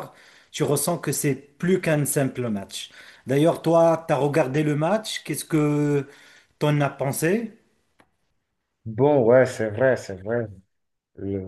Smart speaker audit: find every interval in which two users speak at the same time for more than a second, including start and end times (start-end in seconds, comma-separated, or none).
none